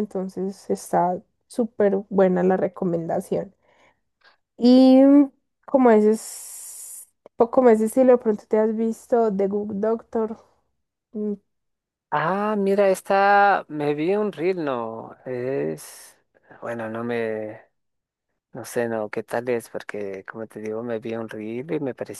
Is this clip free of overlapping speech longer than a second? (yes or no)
yes